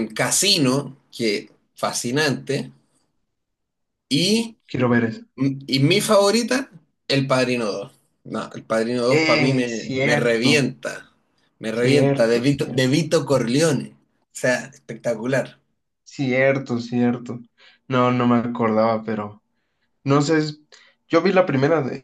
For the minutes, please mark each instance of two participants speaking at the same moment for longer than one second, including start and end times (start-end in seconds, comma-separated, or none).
9.1-10.6, 11.7-12.9